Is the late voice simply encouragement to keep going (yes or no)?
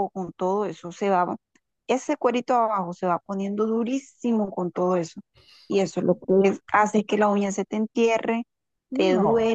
yes